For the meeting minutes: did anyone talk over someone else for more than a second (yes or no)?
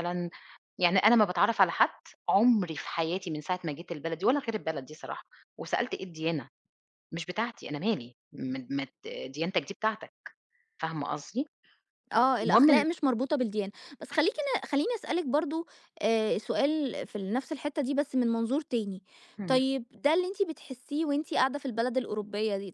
no